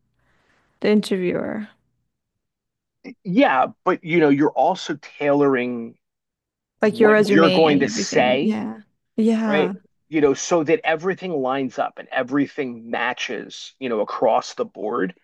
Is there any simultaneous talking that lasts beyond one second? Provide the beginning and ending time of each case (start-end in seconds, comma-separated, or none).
6.8-8.6